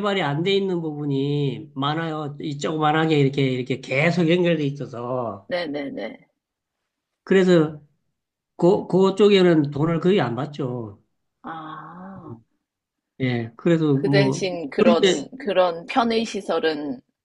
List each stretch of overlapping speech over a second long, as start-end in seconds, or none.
13.9-15.3